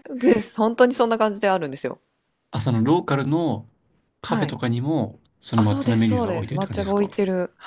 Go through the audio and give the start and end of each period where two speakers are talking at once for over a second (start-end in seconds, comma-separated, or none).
5.5-7.1